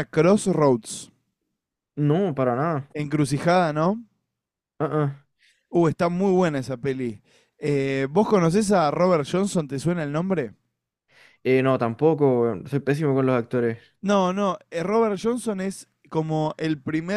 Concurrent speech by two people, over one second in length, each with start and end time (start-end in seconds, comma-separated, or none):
none